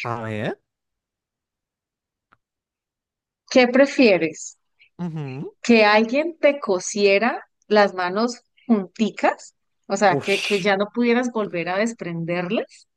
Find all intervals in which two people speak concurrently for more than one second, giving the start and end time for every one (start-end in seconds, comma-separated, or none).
none